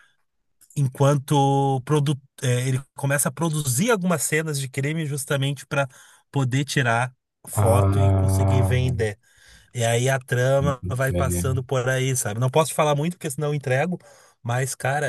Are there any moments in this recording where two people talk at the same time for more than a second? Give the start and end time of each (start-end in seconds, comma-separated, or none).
7.5-8.8